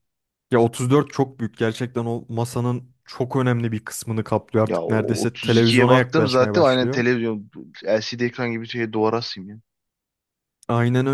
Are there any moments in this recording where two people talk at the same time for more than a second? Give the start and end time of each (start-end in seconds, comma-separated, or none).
4.6-7.0